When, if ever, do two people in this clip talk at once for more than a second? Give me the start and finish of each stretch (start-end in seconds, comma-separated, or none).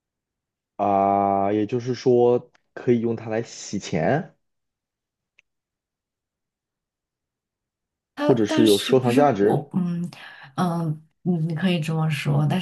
8.1-9.6